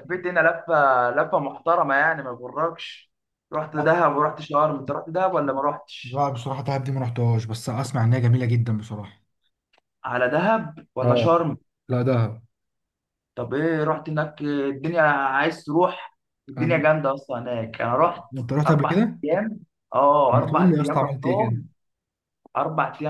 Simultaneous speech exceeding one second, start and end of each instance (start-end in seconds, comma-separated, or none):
20.3-21.6